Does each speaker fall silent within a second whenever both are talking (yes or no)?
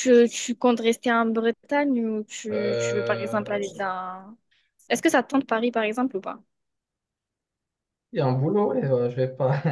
no